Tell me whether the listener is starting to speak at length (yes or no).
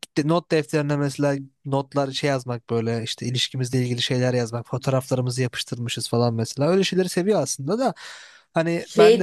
yes